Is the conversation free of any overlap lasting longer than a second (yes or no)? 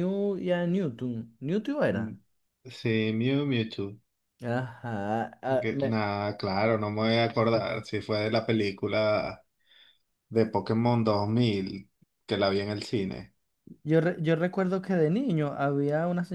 yes